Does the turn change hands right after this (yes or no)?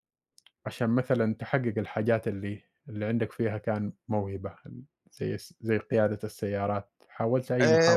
yes